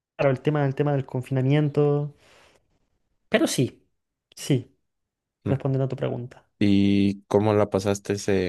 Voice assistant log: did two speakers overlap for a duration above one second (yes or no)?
no